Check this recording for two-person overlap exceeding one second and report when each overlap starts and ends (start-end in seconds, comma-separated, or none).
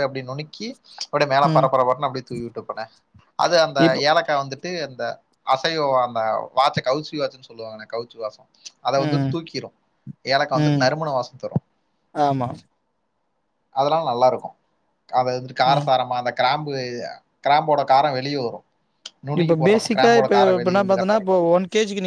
19.4-21.4